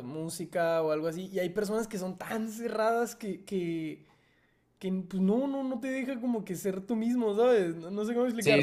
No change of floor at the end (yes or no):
no